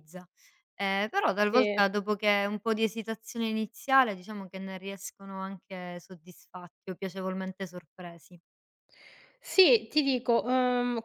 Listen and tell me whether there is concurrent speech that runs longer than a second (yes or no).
no